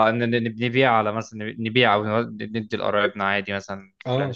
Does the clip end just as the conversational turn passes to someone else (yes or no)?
no